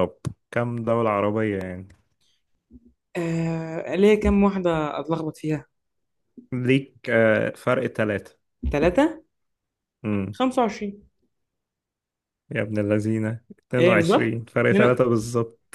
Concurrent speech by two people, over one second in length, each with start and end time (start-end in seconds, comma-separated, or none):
13.8-15.0